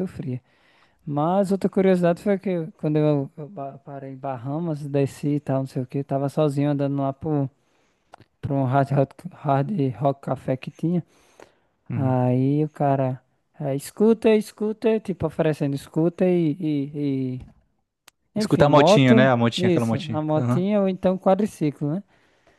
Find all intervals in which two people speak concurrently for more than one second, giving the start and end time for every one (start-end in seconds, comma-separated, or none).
18.4-20.7